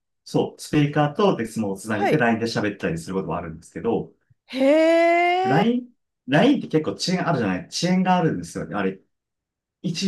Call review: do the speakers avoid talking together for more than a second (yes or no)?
yes